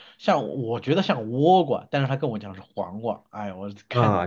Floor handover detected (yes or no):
yes